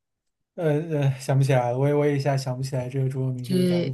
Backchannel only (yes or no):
yes